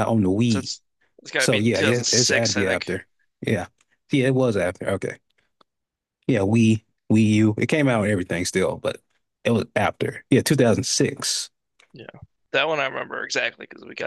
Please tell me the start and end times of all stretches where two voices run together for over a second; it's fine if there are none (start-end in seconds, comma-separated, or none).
1.4-2.9